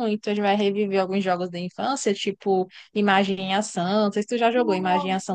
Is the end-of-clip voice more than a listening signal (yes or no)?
yes